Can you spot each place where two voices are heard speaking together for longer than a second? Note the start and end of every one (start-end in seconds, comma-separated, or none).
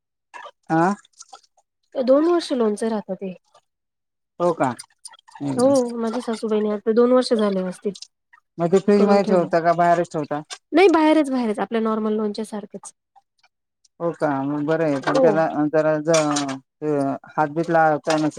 none